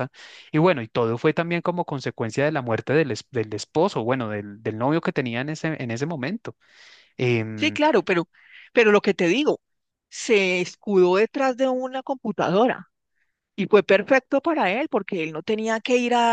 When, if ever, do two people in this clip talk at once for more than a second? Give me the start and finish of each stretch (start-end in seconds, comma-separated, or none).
none